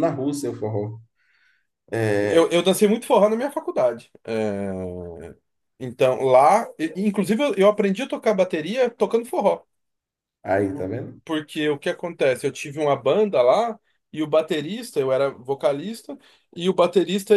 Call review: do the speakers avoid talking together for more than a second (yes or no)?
yes